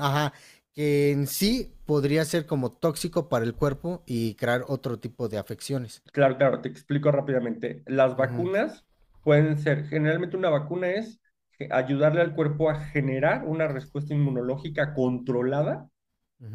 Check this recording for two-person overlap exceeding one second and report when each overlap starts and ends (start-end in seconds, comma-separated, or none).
none